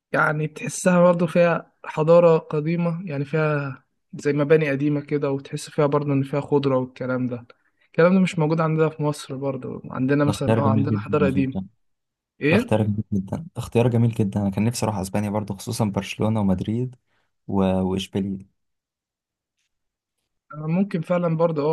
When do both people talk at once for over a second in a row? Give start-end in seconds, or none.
10.2-11.6